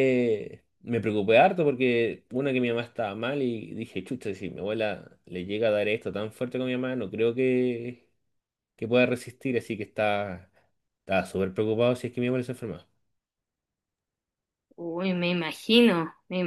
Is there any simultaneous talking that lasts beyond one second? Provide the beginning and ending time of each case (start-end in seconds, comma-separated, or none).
none